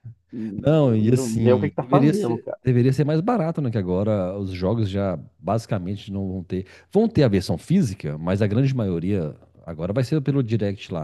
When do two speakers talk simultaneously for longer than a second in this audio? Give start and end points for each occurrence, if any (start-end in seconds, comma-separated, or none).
0.7-2.6